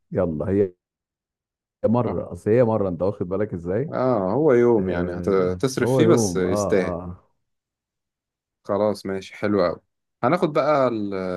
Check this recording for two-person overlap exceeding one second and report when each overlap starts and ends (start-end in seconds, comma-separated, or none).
4.8-7.0